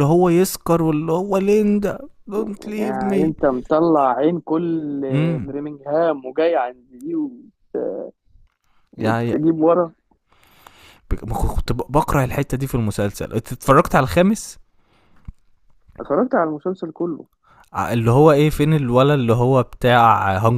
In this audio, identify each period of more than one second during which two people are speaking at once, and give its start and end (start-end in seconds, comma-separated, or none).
none